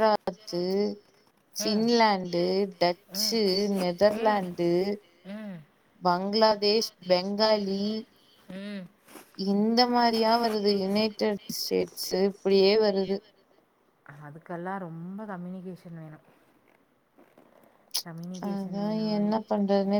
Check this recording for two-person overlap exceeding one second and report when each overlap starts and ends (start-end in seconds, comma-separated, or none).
none